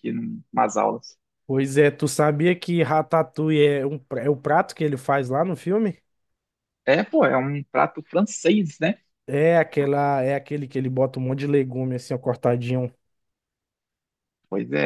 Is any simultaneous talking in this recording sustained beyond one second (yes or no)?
no